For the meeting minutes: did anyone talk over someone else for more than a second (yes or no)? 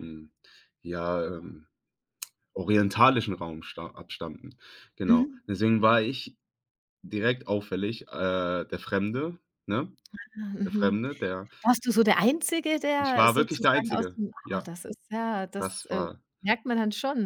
yes